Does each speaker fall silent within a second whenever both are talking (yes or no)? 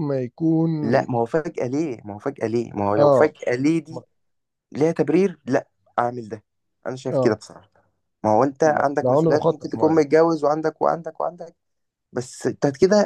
no